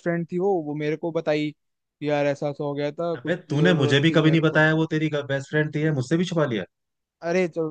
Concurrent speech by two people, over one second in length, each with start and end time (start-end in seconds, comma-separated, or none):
3.1-4.7